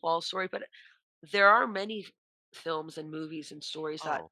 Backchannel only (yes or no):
yes